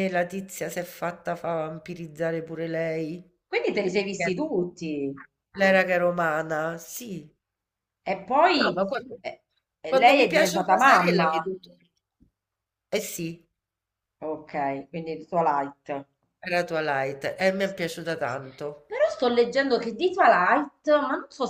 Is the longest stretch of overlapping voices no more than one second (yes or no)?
no